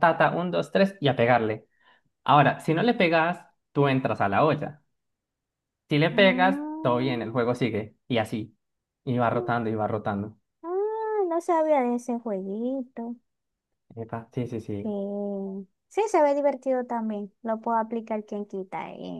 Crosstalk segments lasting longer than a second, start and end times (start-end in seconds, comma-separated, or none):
6.1-7.3